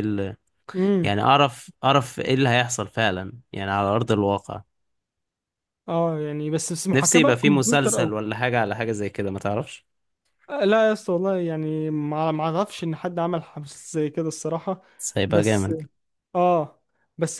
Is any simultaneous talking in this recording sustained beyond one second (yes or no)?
yes